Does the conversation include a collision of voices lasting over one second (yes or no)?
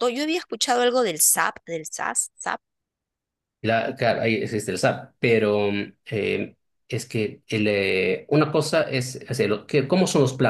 no